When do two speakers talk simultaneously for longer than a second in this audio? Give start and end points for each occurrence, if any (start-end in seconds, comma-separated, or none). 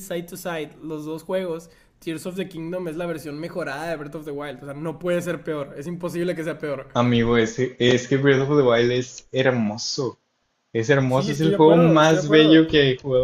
11.1-12.7